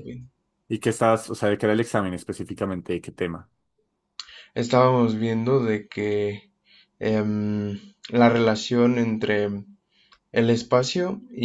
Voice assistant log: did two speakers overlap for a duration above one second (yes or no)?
no